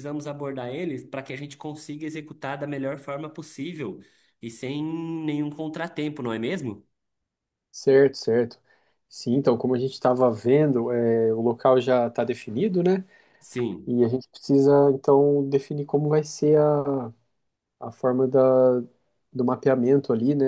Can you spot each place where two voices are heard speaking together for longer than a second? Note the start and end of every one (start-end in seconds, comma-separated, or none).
none